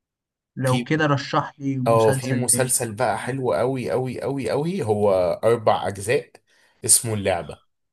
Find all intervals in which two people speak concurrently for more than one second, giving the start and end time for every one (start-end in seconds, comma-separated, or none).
1.9-3.4